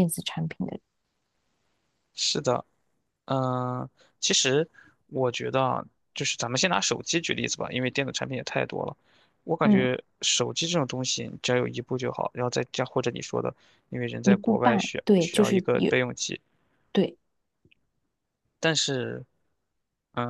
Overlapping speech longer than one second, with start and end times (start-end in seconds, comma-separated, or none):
14.2-15.9